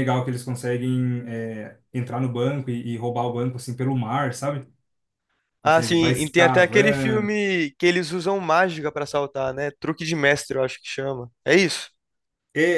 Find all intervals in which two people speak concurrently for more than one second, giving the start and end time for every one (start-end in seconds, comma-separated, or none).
5.6-7.3